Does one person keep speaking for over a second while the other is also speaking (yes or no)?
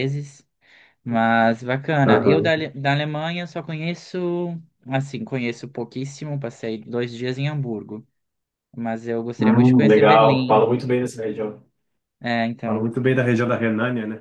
yes